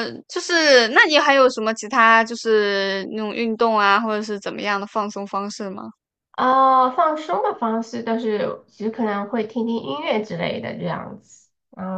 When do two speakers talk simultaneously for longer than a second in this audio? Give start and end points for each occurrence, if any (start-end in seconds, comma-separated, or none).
none